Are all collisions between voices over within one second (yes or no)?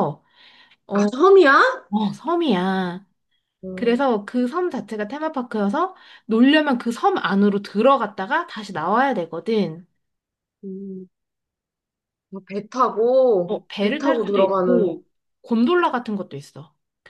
no